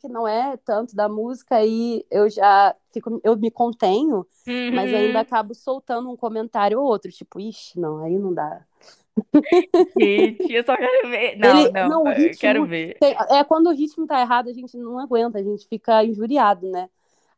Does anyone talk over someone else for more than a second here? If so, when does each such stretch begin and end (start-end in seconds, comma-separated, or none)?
11.4-13.0